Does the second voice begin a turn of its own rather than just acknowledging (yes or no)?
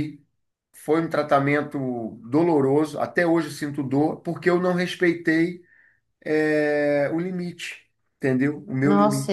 yes